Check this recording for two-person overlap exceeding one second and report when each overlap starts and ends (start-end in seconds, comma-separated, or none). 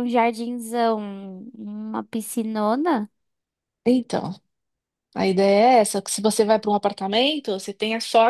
none